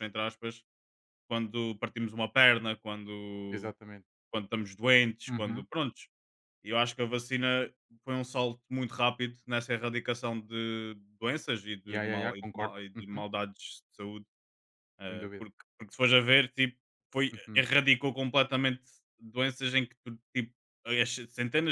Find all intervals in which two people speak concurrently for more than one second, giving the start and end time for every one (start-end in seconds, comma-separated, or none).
11.8-13.2